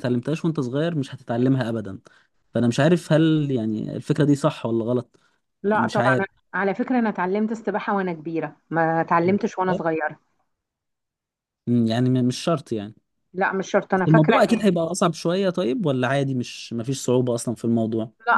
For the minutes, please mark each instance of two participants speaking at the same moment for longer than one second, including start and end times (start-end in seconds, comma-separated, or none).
none